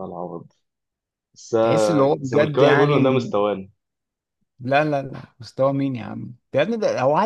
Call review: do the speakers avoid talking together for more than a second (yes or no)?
no